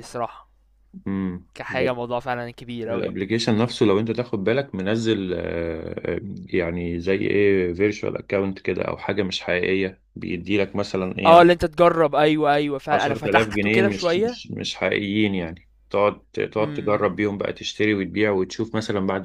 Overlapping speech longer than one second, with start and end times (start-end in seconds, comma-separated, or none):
12.9-14.4